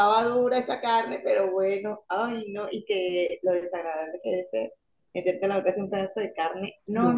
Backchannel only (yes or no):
yes